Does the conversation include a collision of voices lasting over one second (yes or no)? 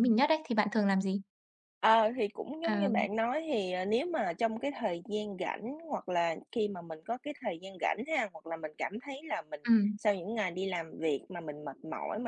no